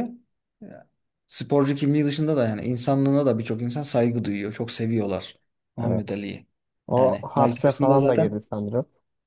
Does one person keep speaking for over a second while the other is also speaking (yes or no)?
yes